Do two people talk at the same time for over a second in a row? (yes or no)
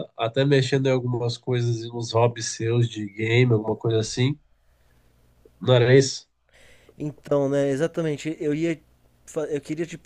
no